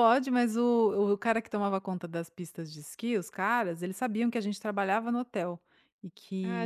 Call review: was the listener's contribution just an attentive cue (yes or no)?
no